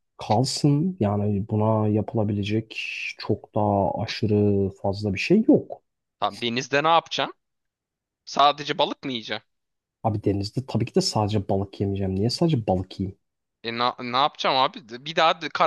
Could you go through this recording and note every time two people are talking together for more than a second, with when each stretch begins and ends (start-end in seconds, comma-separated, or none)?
none